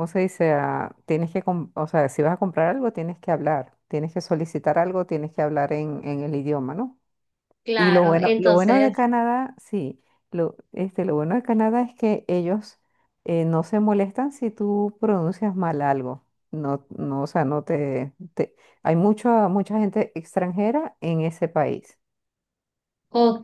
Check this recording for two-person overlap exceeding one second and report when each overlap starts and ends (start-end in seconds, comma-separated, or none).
7.8-9.0